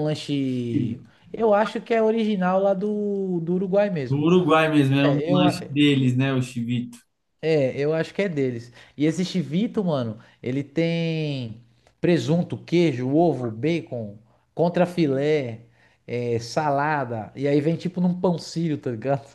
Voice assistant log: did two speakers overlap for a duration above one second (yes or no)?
no